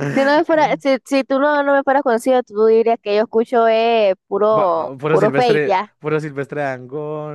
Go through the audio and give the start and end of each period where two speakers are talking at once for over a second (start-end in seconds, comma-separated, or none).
4.5-5.9